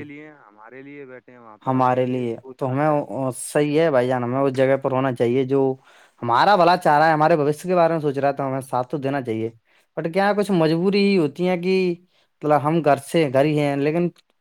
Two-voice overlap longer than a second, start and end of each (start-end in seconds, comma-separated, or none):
1.6-3.2